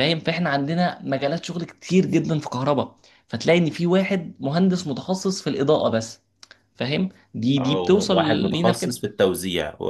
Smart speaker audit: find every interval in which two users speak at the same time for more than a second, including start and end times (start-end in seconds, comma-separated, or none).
7.6-8.9